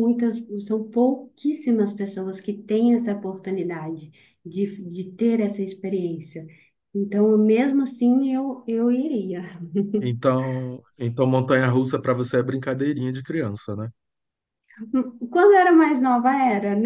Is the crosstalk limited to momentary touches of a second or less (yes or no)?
yes